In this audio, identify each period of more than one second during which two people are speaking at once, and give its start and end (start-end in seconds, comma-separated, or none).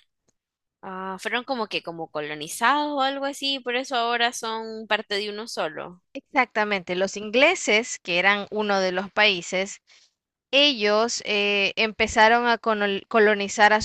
none